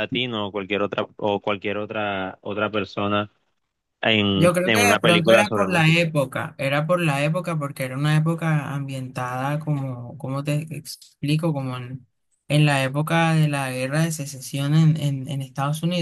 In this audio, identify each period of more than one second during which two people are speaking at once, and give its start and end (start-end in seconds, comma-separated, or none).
4.3-6.0